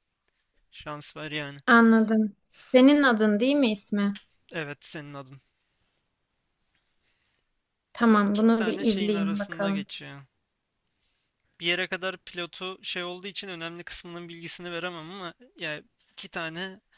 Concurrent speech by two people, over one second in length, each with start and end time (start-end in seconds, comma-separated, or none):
8.2-9.8